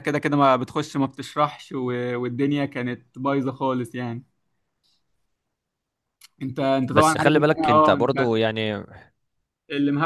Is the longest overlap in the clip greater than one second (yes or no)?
yes